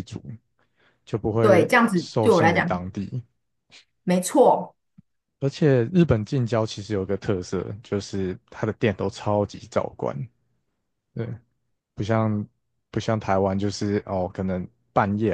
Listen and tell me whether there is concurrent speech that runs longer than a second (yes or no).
yes